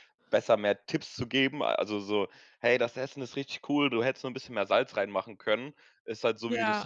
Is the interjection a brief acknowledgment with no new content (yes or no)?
yes